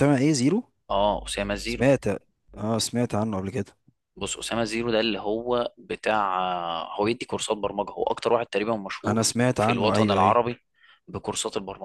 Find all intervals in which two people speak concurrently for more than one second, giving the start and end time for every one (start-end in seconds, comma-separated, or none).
9.1-10.4